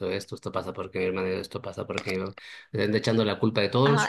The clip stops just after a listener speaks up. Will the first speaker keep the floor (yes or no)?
no